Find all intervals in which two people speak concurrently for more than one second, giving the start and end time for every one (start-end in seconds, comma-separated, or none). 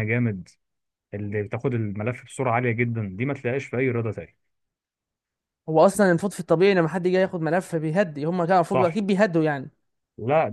none